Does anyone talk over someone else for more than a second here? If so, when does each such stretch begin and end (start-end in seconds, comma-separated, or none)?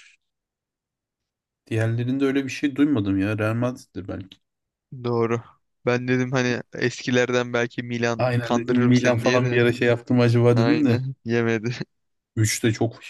8.2-9.7